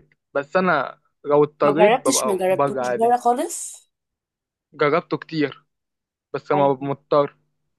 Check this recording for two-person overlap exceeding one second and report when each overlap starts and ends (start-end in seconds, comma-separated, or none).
1.6-3.1